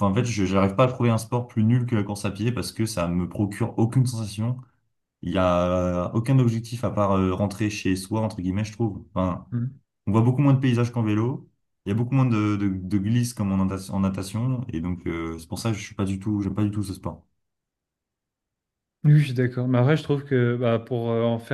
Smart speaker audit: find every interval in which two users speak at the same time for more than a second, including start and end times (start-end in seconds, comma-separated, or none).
none